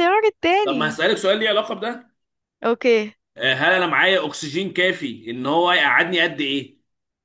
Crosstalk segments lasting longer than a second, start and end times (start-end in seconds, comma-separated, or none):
none